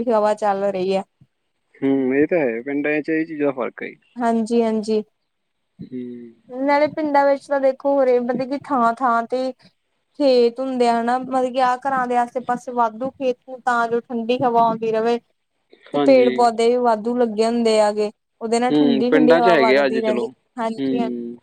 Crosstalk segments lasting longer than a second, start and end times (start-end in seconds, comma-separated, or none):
18.7-20.9